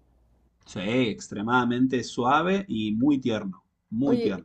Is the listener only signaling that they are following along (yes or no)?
no